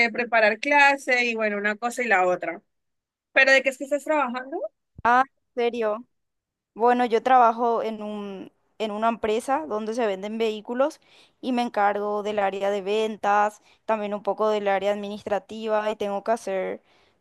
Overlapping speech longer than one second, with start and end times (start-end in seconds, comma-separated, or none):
none